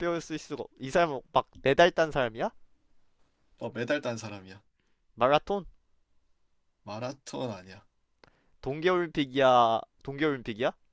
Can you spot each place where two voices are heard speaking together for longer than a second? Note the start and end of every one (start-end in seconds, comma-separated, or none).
none